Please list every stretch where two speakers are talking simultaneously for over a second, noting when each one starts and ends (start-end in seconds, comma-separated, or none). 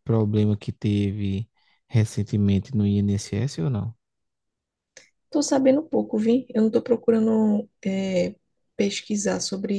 none